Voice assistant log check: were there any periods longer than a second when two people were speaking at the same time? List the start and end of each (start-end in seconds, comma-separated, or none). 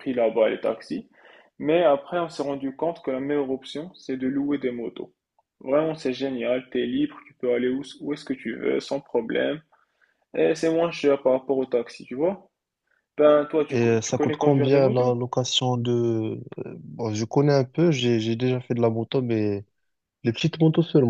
13.7-15.1